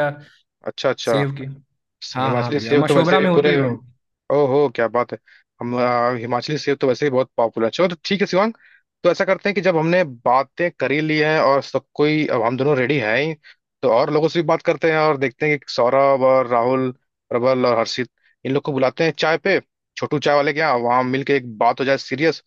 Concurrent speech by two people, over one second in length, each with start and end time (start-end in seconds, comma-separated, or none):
2.1-3.6